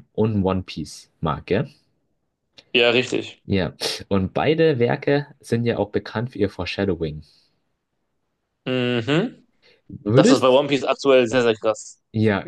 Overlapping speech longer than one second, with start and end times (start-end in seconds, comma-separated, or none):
none